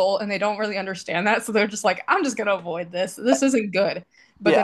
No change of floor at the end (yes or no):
no